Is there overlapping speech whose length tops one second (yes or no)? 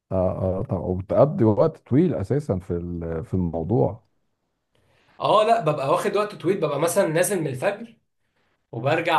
no